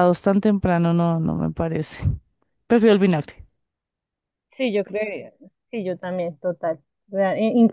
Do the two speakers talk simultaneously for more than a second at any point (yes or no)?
no